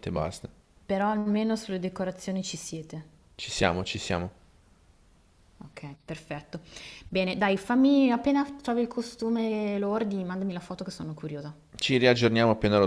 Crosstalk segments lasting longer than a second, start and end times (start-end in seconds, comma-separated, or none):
none